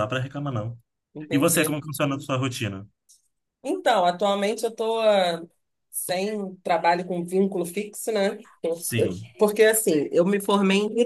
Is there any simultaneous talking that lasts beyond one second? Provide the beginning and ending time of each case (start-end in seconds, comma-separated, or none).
none